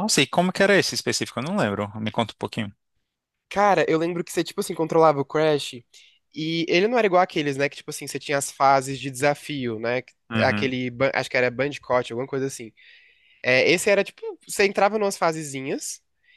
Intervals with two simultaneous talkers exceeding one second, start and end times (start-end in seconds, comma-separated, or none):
none